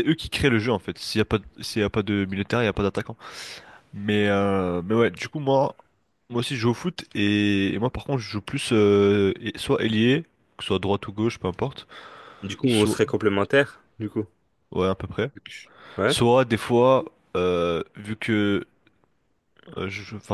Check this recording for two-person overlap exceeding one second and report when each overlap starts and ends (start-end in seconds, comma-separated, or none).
none